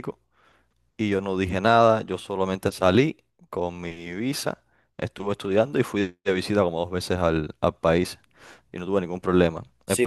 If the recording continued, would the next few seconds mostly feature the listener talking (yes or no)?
yes